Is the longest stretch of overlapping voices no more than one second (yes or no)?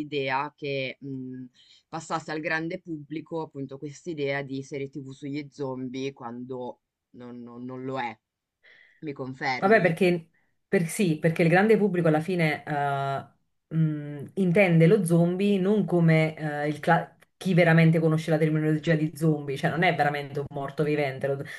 yes